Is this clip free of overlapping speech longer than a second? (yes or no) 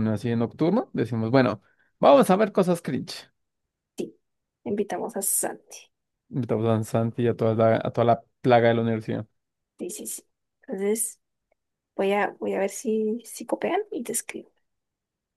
yes